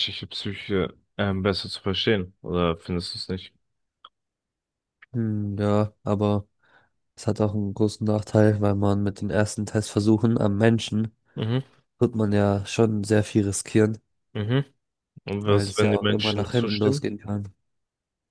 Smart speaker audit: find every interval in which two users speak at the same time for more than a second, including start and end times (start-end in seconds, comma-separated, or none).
15.4-17.1